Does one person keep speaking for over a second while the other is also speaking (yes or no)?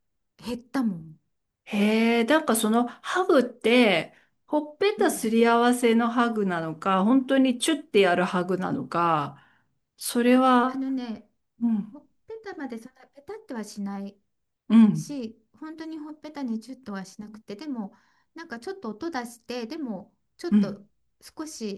no